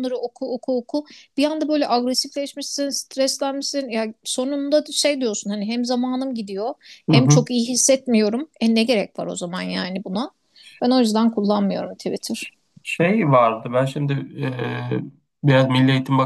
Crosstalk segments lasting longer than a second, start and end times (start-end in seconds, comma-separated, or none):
none